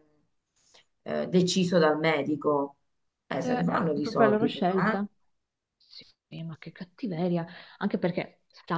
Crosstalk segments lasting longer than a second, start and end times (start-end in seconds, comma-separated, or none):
3.4-5.0